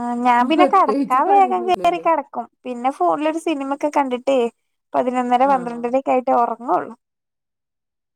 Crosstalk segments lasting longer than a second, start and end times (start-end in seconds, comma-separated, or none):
0.6-2.0